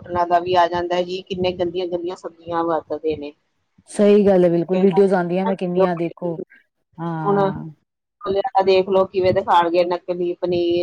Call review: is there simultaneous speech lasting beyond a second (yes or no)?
no